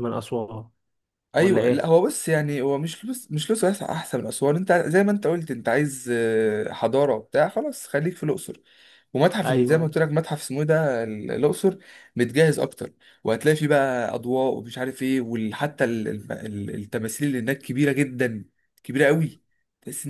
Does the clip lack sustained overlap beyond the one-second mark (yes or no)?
yes